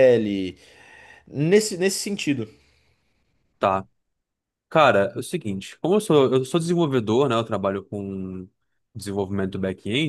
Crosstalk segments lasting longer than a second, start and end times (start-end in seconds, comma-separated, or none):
none